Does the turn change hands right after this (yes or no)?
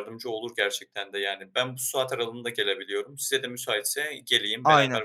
no